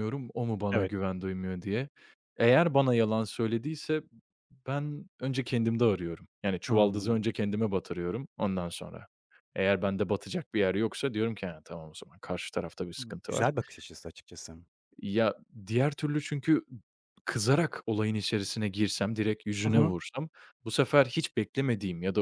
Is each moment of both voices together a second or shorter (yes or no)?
yes